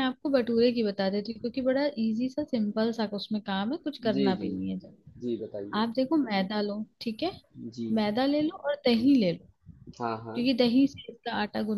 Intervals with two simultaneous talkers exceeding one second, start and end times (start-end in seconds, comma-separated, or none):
none